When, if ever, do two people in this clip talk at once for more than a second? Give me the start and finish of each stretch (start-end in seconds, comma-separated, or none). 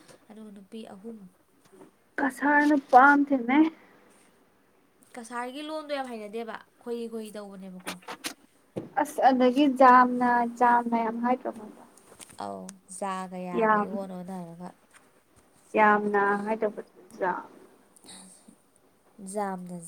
none